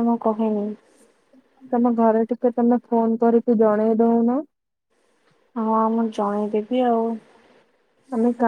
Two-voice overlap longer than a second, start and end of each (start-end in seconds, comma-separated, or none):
none